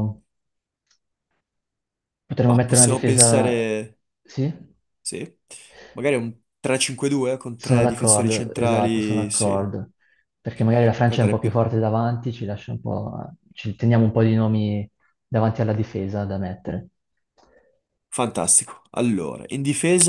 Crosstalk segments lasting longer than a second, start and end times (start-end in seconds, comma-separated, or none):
2.4-3.7, 7.6-9.7